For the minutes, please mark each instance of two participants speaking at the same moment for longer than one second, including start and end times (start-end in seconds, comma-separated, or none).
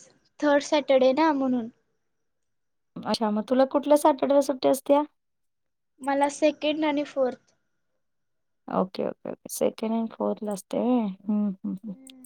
none